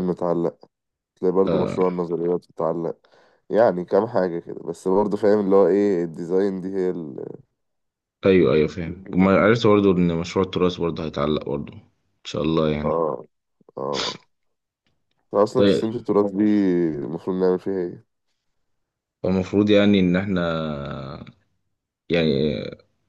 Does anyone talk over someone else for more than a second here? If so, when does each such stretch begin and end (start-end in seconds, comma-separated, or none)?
none